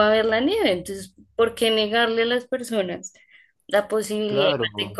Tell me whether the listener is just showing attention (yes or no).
yes